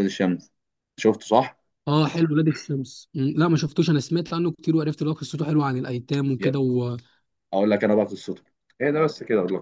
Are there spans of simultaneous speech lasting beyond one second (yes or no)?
no